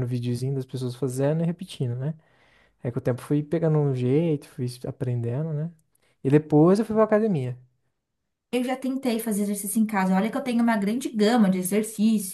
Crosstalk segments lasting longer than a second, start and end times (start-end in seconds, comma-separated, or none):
none